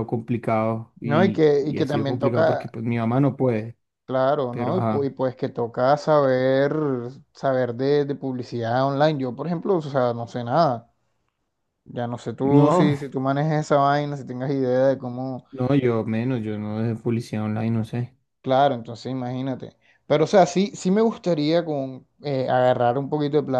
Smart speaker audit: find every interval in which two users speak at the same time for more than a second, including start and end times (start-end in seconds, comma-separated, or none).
1.0-2.8